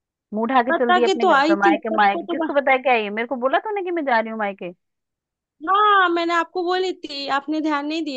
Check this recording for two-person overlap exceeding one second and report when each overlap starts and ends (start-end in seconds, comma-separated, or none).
0.7-2.5